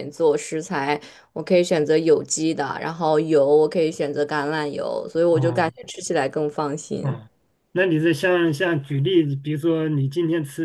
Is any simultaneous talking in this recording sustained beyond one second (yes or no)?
no